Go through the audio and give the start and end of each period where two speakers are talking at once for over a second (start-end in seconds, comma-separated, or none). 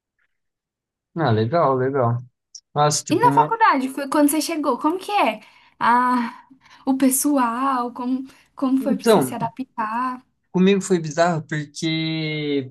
none